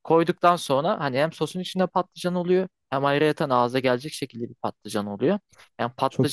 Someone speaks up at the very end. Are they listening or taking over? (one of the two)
listening